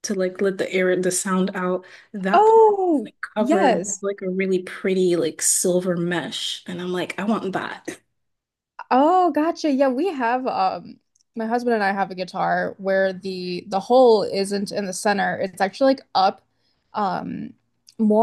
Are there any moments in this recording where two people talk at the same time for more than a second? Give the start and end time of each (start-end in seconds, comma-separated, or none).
2.3-4.0